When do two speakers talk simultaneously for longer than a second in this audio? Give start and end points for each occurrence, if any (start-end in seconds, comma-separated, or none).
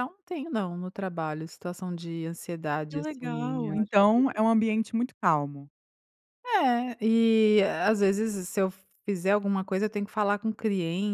2.9-4.4